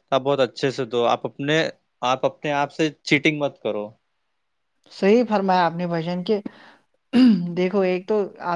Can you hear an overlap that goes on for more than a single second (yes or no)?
no